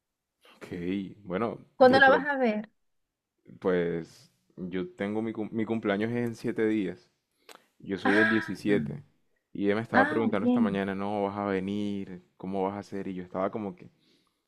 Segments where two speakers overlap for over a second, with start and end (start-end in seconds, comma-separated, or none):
none